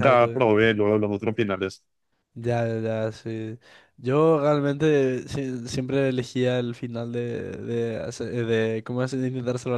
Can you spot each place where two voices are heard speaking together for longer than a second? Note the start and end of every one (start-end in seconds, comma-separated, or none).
none